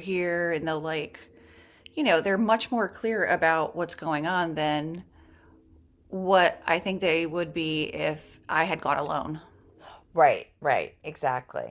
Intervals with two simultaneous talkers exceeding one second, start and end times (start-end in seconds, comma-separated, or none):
none